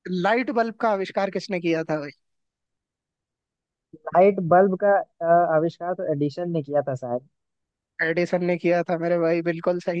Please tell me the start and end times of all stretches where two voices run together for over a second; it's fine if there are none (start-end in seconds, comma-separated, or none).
none